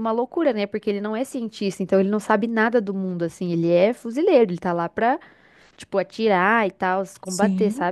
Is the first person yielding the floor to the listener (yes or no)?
yes